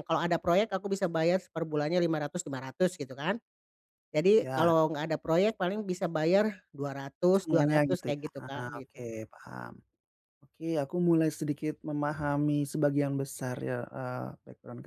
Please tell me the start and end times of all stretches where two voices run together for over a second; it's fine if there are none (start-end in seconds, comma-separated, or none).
7.3-9.1